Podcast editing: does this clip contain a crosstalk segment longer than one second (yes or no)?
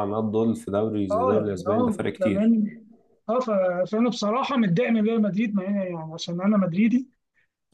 yes